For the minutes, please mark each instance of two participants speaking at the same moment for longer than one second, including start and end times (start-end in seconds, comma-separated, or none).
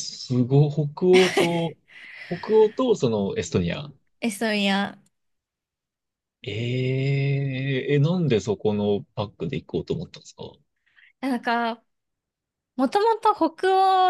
none